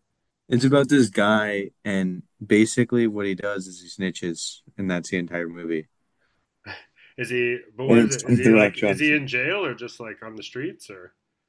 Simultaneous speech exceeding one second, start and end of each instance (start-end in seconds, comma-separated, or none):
7.8-9.2